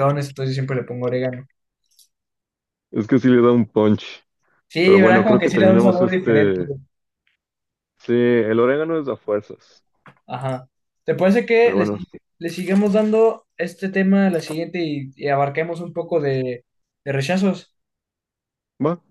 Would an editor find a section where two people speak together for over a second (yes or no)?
yes